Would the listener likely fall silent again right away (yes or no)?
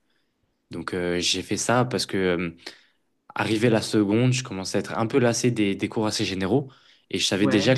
yes